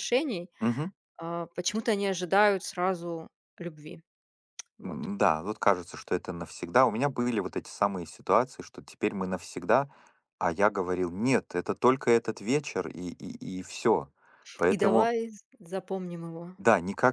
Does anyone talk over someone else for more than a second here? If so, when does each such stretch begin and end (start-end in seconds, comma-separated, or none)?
none